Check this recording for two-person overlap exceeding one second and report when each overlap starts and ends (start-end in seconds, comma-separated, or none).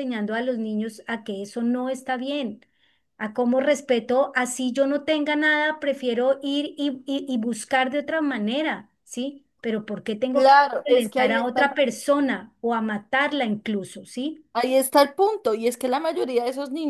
10.3-11.7